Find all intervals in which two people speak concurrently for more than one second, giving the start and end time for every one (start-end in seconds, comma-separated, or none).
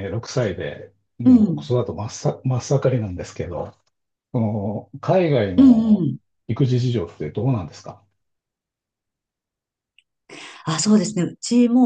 none